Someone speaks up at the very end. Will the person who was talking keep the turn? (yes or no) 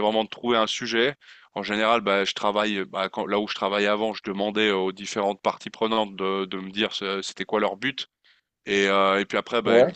yes